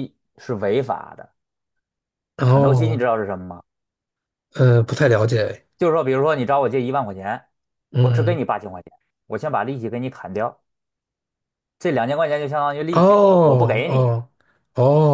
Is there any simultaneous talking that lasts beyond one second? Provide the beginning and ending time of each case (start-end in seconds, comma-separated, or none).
12.9-14.1